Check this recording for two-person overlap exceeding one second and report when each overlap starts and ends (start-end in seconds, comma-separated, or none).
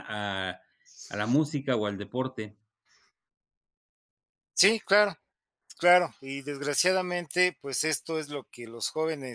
none